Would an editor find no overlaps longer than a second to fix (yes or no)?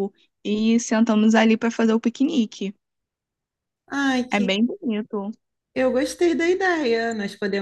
yes